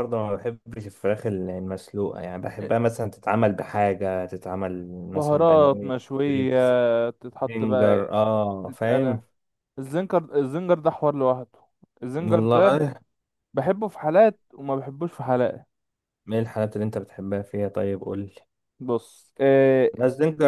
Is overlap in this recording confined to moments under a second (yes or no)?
no